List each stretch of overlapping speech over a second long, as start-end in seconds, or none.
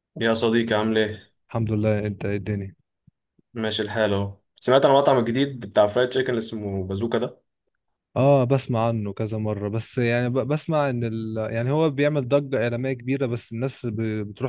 none